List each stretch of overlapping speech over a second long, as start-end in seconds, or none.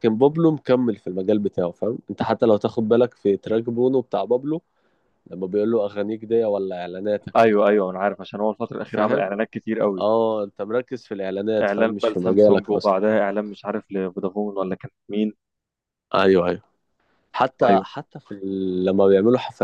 11.6-12.9